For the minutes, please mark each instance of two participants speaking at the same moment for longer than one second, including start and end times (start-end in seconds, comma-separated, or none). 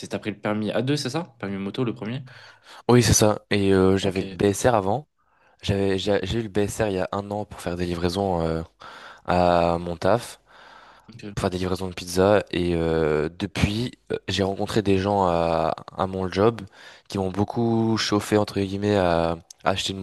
none